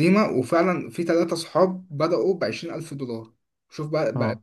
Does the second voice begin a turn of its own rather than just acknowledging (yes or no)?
no